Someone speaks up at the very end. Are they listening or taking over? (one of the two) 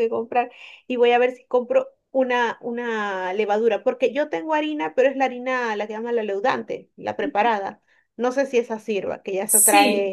taking over